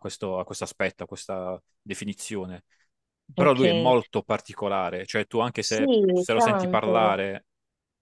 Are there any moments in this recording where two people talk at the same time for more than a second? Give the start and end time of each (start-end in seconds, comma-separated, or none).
5.7-7.1